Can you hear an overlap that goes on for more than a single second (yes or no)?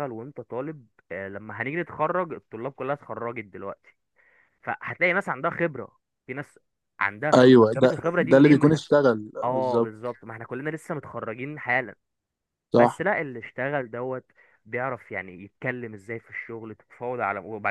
yes